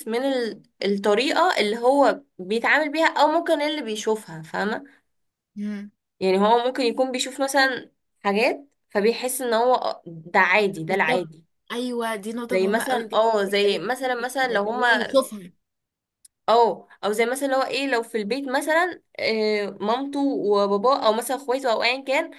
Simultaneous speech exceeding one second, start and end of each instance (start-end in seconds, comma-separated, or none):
12.5-15.2